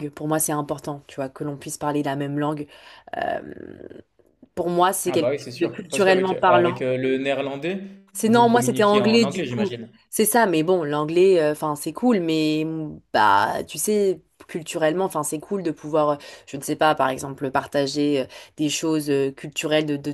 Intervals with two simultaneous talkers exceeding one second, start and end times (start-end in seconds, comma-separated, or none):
5.0-6.8, 8.2-9.9